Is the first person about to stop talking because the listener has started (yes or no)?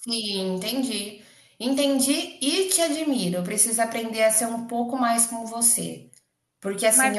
no